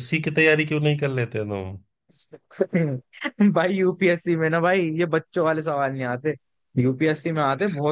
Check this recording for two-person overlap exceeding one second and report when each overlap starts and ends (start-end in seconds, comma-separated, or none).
none